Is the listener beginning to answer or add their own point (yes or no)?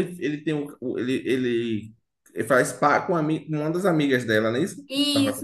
yes